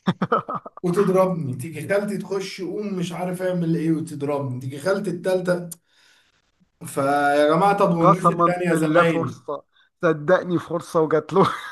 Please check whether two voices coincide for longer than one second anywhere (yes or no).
yes